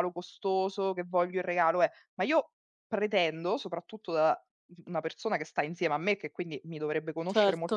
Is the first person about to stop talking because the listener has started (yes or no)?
no